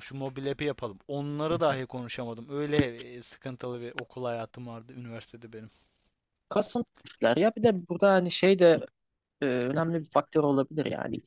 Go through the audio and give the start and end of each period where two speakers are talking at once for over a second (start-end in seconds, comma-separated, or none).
none